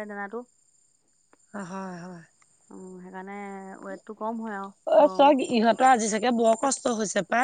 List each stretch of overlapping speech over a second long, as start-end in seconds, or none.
none